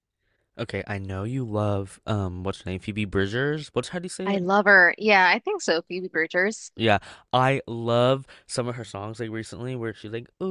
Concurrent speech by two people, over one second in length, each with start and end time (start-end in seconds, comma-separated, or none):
none